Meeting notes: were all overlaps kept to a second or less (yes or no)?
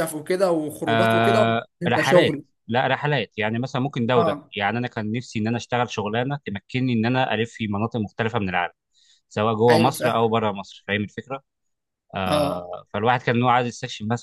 no